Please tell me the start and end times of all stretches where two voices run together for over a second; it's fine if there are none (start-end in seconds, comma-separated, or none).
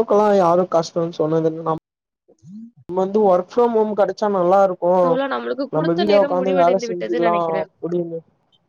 5.8-7.7